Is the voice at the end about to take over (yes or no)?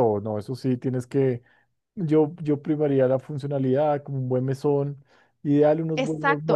yes